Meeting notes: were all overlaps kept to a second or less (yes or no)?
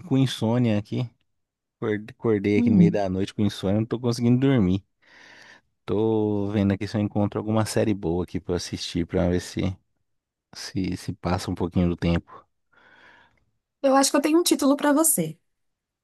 yes